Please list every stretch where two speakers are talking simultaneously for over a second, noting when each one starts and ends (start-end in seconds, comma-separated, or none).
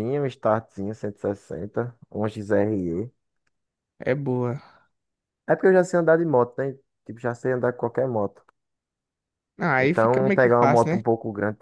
9.8-11.0